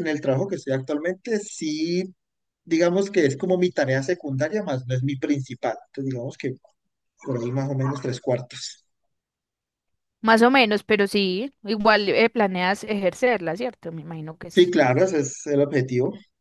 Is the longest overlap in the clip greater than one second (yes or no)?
no